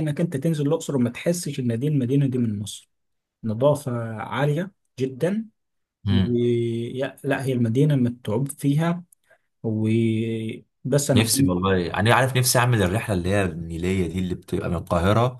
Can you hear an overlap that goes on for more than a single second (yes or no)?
no